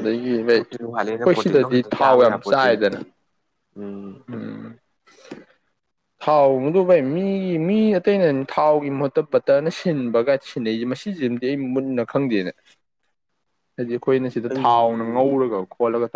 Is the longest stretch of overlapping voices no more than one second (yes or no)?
no